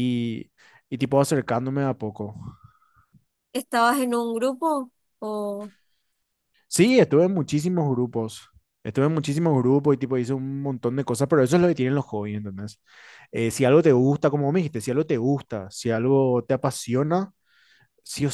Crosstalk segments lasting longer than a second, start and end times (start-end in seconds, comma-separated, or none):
none